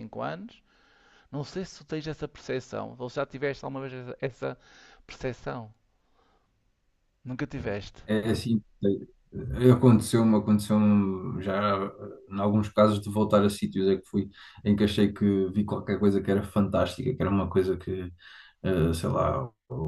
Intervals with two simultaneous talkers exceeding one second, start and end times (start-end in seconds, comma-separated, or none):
none